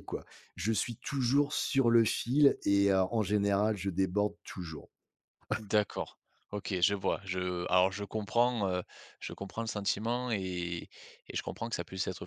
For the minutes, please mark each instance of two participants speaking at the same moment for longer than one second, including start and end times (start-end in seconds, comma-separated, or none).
none